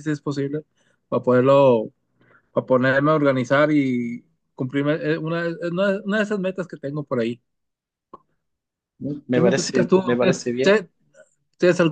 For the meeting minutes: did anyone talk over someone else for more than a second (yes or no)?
yes